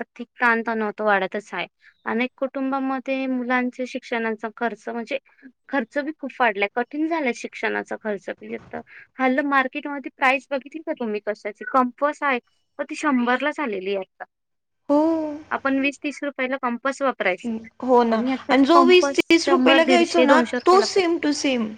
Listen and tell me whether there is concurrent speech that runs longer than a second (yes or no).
yes